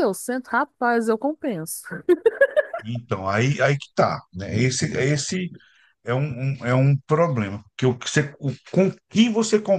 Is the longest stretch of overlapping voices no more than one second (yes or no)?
yes